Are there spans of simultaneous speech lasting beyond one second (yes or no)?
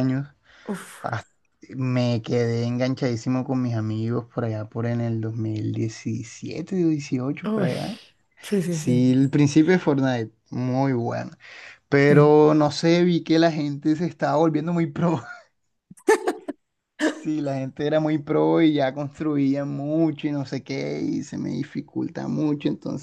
no